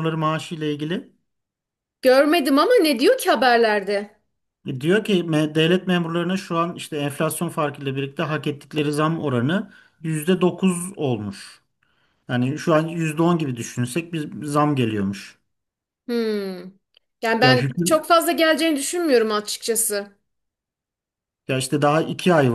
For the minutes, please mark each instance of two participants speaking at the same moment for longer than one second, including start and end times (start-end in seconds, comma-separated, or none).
none